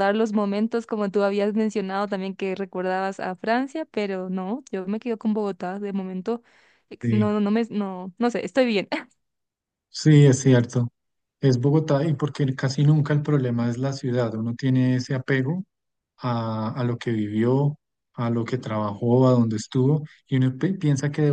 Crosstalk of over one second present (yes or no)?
no